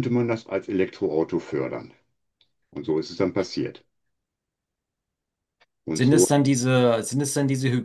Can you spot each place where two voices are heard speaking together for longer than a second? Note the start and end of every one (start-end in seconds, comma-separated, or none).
none